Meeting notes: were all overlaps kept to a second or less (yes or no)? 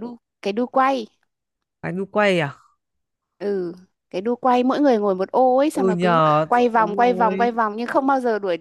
no